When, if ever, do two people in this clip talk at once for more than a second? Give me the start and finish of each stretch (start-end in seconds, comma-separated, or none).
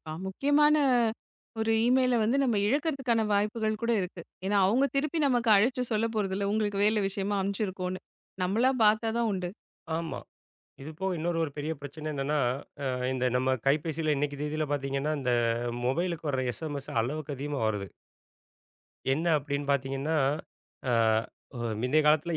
none